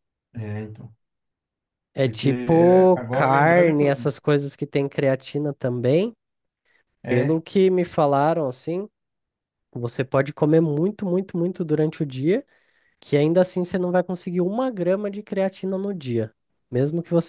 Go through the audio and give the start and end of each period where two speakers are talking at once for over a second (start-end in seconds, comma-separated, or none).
2.0-4.1